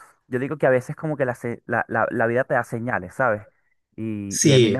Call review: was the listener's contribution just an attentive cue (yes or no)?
yes